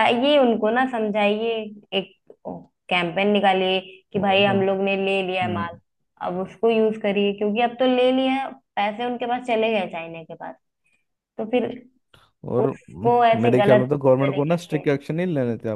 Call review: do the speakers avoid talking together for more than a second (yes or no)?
no